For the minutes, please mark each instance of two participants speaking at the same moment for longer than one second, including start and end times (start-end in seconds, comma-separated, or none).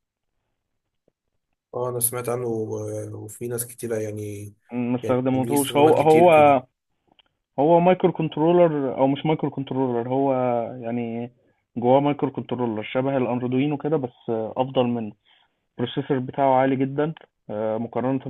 5.0-6.3